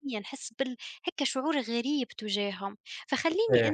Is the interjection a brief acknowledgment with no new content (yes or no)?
yes